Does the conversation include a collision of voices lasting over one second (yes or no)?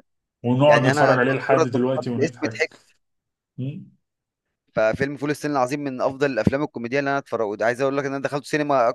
yes